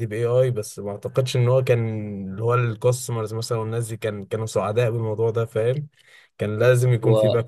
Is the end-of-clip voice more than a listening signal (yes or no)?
no